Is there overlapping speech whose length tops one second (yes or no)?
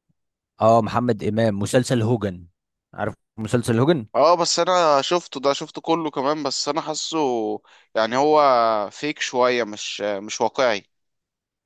no